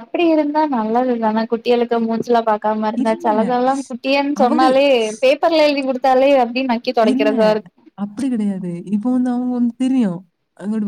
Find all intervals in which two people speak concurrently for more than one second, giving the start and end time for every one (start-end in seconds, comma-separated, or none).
none